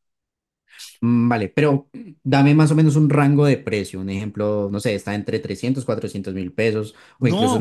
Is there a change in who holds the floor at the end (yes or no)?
yes